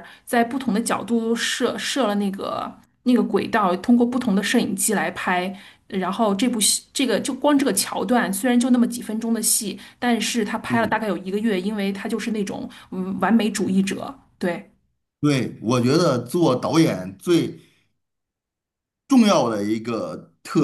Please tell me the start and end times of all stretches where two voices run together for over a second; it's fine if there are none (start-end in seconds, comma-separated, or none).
none